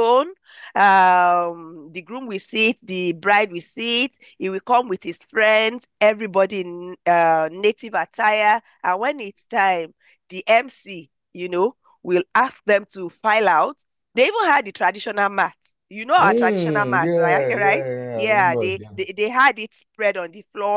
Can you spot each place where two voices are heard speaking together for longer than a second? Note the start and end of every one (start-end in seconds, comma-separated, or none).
16.2-18.8